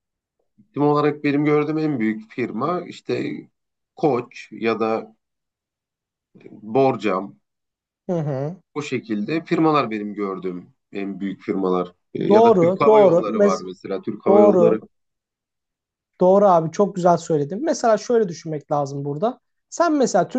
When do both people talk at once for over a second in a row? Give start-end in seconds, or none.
12.3-13.6